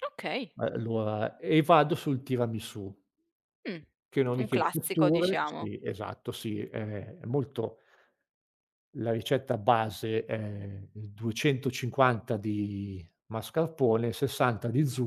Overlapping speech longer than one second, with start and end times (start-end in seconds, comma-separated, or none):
4.4-5.7